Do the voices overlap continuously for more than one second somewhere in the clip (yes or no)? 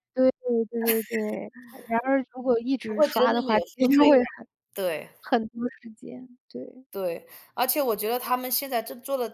yes